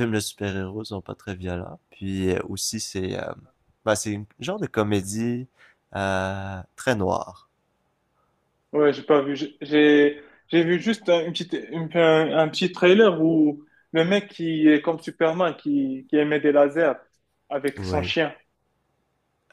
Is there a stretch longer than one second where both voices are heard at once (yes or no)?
no